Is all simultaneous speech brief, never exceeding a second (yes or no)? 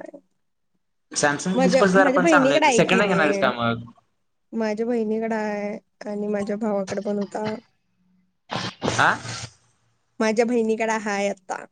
no